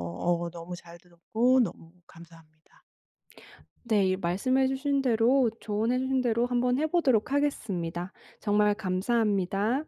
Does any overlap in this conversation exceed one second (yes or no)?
no